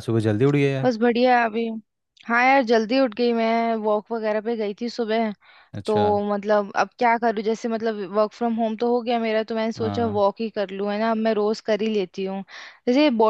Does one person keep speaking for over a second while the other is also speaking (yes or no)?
no